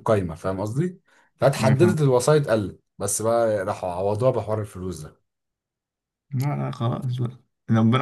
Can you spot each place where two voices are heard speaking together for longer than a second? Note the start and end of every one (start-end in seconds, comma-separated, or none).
none